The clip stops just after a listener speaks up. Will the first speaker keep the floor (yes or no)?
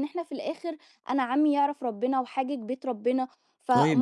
yes